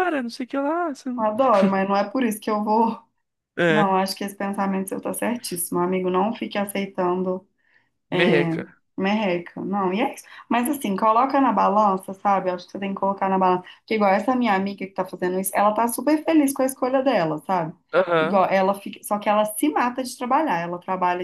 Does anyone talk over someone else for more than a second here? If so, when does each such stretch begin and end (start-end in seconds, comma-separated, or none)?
none